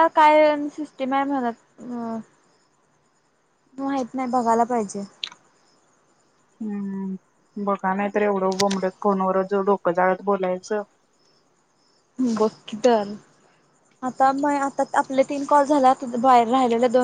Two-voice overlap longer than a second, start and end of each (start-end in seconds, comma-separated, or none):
none